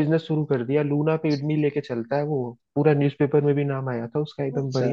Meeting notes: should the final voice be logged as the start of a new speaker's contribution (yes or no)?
no